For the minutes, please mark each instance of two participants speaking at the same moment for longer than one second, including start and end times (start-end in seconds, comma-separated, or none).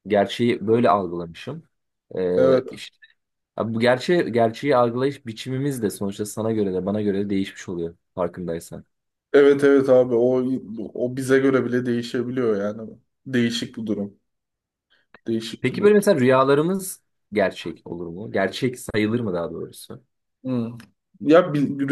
none